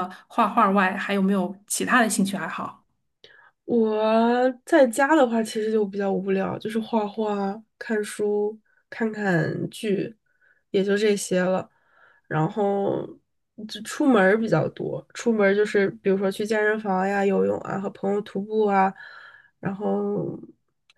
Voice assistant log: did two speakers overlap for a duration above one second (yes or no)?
no